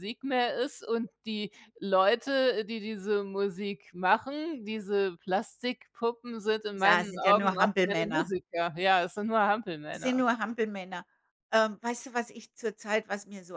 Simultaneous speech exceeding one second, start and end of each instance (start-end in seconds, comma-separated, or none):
6.7-8.3